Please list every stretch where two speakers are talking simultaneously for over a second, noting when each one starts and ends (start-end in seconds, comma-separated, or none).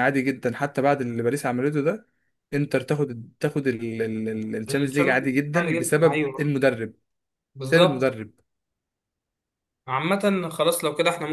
4.7-6.5